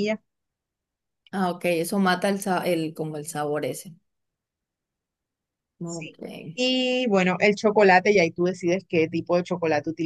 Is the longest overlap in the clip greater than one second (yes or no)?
no